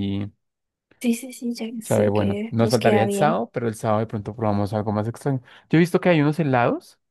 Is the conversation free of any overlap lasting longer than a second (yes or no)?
no